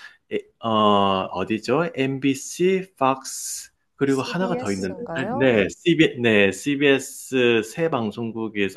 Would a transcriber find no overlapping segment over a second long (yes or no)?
no